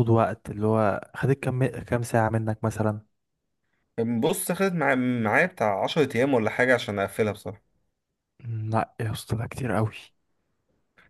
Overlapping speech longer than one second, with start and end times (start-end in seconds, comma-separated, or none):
none